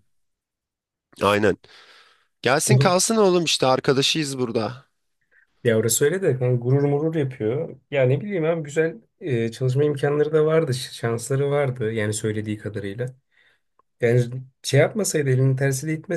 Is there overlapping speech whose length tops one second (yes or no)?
no